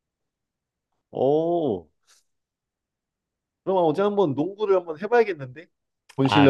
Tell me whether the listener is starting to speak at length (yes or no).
yes